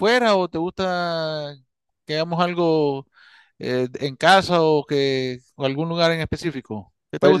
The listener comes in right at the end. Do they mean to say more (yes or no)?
yes